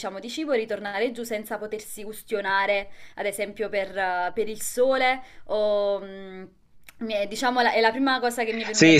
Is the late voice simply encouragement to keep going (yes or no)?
no